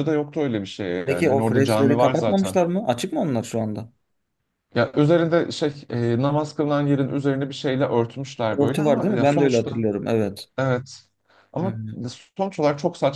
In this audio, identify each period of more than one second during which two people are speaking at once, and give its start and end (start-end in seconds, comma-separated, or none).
1.1-2.6, 8.6-9.8